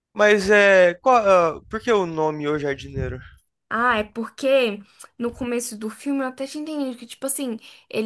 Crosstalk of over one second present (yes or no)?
no